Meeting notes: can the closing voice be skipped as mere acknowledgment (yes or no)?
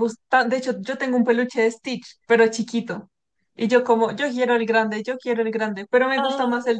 yes